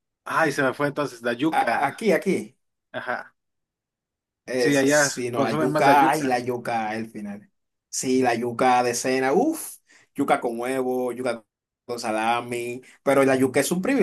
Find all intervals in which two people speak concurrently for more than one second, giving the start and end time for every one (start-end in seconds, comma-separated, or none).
4.6-6.5